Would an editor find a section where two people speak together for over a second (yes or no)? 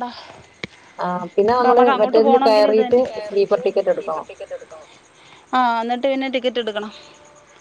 yes